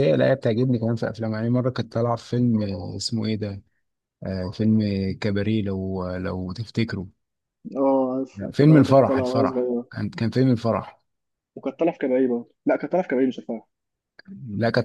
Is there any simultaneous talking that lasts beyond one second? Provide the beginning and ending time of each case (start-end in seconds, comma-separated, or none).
8.3-9.9